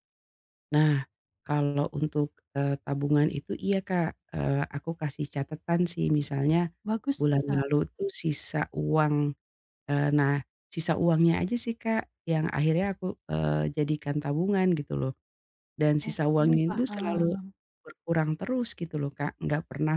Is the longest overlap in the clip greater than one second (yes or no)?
yes